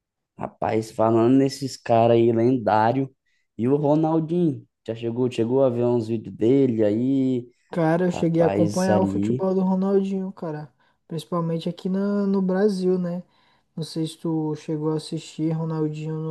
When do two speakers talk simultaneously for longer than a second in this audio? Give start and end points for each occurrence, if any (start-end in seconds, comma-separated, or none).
8.1-9.4